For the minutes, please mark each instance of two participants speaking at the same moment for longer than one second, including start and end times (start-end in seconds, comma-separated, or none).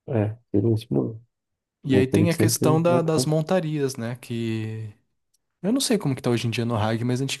1.9-3.3